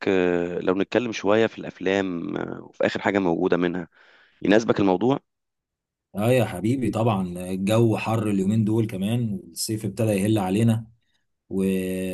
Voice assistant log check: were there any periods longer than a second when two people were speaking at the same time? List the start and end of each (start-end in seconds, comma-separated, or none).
none